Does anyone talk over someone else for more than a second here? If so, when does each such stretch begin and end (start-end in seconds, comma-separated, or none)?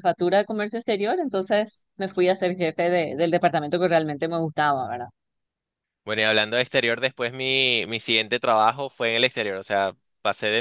none